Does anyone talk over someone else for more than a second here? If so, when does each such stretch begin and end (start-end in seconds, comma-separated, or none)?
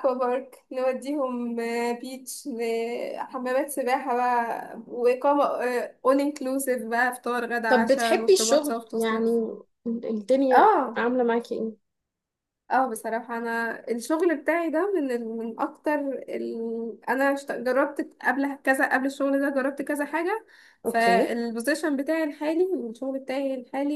7.7-9.3